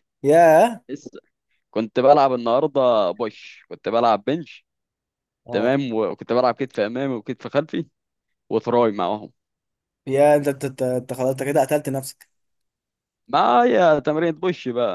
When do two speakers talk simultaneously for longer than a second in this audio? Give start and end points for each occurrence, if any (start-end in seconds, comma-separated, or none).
none